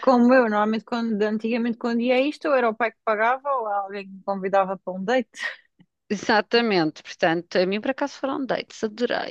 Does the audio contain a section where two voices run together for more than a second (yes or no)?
no